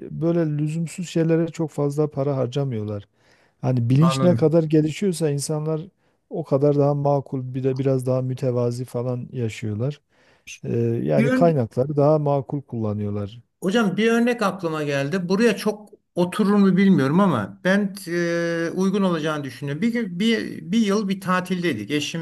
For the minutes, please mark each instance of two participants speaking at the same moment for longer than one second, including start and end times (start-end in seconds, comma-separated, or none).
none